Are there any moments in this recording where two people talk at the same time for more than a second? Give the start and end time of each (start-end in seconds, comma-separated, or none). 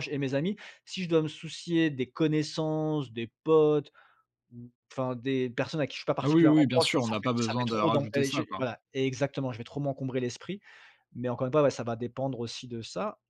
6.2-8.6